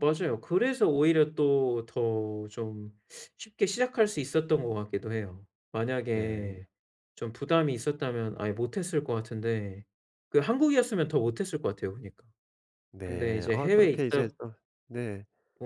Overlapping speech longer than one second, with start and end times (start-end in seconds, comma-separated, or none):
13.0-14.3